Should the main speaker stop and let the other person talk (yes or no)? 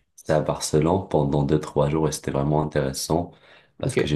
no